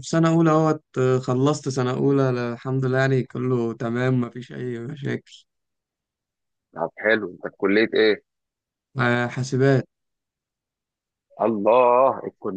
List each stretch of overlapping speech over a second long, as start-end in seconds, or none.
none